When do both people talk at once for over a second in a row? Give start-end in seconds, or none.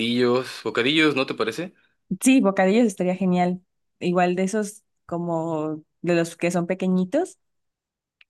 none